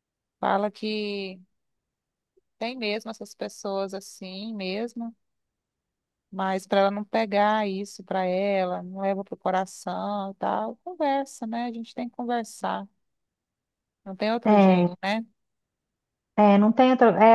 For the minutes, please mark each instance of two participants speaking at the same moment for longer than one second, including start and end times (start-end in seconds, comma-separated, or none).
none